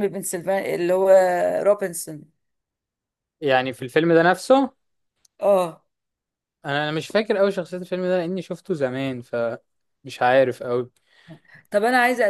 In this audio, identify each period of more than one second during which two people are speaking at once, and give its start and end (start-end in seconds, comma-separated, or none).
none